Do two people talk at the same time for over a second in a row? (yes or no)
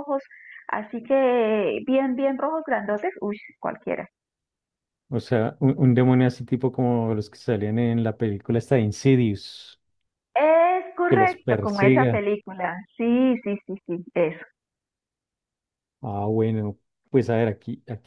yes